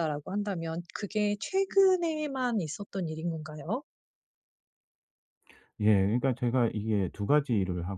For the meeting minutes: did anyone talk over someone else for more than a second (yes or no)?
no